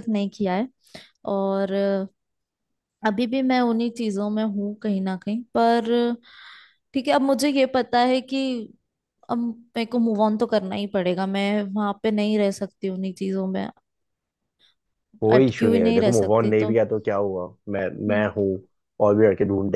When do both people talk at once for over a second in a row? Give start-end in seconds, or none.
15.4-16.7